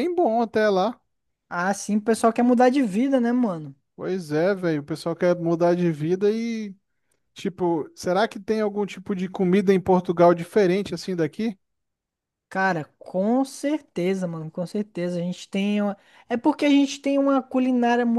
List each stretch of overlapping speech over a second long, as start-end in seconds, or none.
none